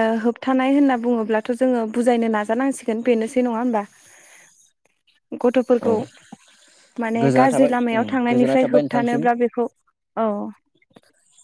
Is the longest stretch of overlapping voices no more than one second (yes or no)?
no